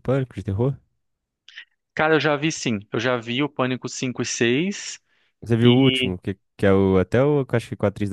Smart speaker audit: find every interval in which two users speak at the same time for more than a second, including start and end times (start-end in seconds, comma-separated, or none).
none